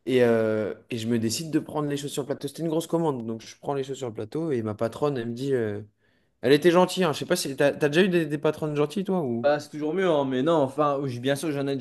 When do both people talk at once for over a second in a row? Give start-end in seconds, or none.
none